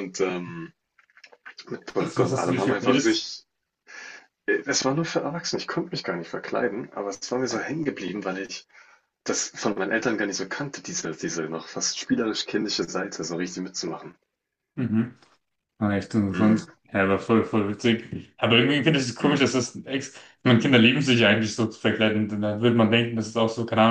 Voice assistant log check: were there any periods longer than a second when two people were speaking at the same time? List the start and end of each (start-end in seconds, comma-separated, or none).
2.0-3.2